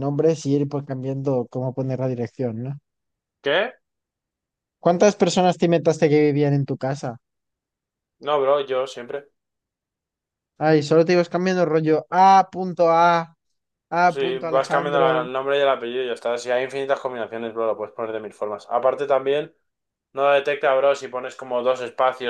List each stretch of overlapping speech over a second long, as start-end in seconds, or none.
14.1-15.3